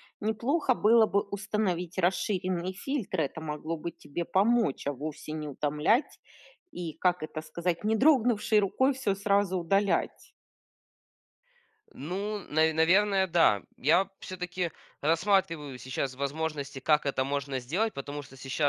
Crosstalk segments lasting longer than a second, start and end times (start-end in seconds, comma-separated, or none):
none